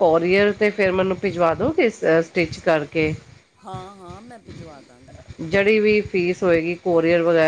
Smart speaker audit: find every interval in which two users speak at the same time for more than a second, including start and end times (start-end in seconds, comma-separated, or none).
none